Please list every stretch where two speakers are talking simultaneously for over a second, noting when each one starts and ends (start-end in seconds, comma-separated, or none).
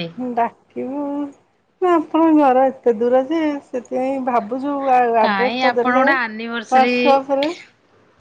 5.2-7.0